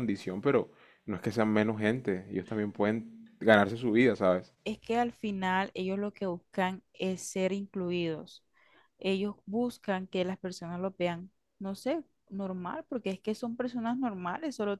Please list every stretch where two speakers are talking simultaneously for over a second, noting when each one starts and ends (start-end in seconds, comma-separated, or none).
none